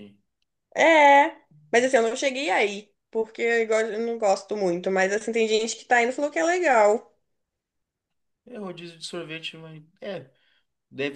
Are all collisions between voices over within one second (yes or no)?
yes